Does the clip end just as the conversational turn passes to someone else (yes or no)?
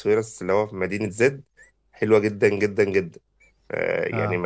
no